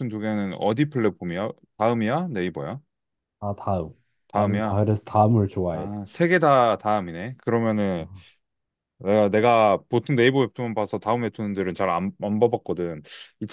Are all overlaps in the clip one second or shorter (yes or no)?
yes